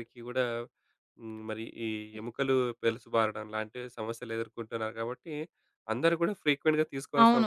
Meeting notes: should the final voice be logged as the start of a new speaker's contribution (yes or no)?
yes